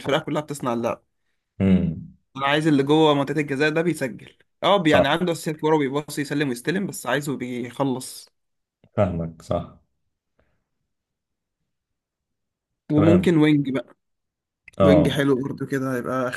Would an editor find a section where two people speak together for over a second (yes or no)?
no